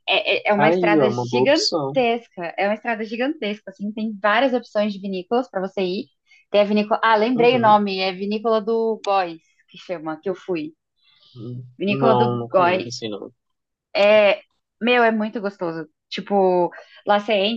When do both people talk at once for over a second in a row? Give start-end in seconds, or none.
0.6-2.0, 11.8-13.1